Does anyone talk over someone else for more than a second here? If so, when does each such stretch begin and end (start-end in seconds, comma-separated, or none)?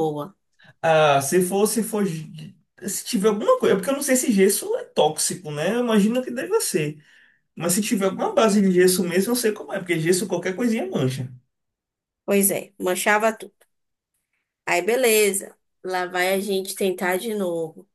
none